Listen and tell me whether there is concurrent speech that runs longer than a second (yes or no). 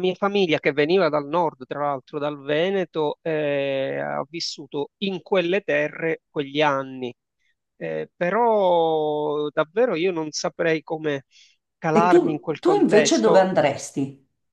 yes